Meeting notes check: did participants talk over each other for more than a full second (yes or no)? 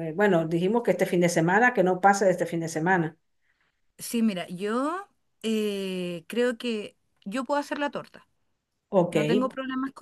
no